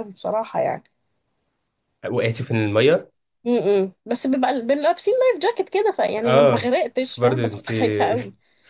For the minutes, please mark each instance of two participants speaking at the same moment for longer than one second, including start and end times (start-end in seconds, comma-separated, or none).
6.2-7.7